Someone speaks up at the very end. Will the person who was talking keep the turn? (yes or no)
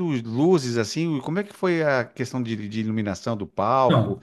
yes